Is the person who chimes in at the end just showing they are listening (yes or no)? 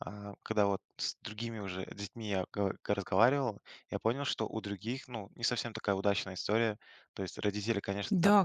no